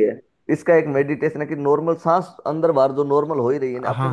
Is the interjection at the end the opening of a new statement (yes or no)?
yes